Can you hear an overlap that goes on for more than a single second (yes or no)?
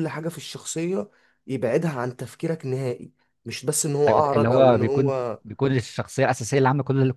yes